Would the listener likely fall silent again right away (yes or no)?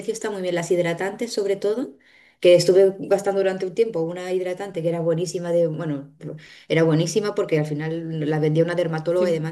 yes